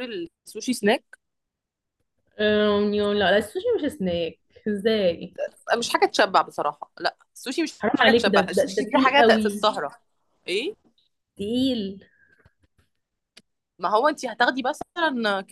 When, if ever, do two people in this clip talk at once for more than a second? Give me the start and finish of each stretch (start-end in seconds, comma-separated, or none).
7.8-9.7